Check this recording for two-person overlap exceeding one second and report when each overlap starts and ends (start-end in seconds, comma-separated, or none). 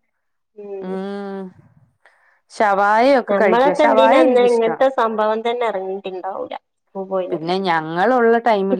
3.3-4.8